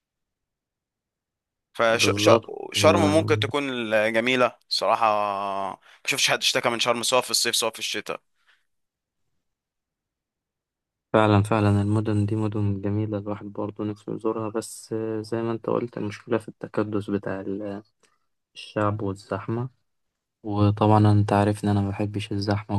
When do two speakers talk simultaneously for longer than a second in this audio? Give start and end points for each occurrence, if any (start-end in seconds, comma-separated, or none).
2.0-3.4